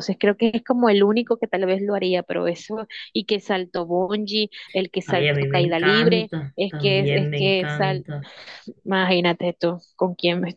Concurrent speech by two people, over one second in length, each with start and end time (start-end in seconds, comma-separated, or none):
5.0-8.1